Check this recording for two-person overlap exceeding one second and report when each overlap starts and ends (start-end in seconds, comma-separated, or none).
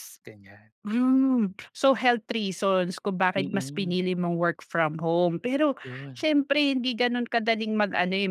none